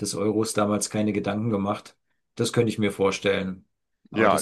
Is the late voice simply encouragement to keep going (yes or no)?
no